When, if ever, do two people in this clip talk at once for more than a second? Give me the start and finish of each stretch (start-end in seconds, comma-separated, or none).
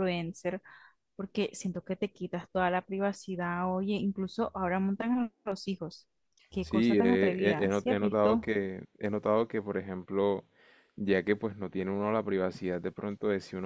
6.6-8.5